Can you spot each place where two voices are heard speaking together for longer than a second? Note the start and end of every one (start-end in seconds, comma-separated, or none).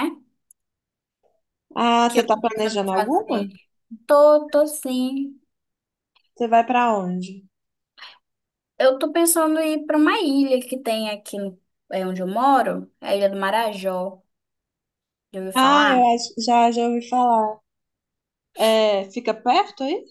2.1-3.5